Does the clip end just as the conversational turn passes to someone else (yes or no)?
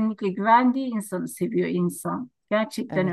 yes